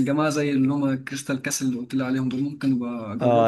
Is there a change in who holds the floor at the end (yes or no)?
yes